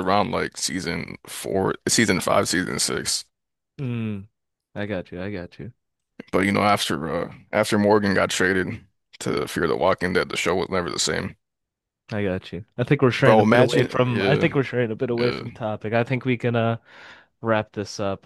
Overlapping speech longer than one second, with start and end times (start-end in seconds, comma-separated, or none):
13.1-14.5